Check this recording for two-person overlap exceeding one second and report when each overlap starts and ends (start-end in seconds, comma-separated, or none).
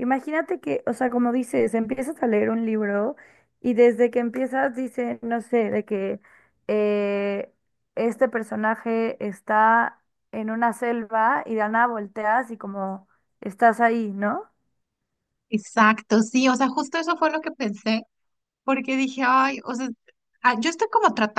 none